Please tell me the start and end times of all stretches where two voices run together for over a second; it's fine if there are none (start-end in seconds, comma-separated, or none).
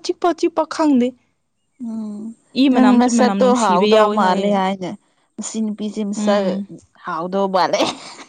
2.7-4.6